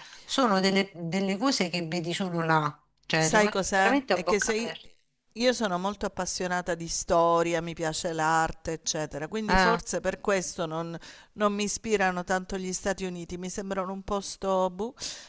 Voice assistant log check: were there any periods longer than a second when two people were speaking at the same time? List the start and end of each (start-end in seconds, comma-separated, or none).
3.2-4.8